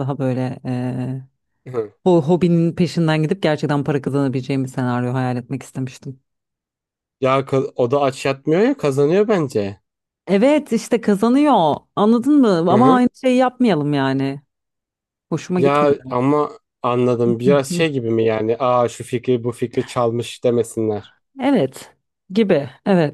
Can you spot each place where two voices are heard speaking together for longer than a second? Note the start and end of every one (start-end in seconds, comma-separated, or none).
none